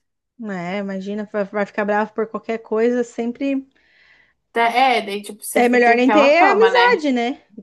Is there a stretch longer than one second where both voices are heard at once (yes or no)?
yes